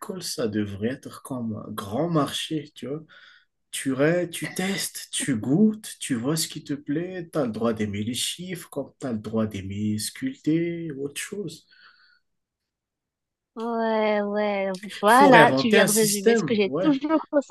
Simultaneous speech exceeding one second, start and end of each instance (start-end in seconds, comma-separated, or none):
14.8-17.0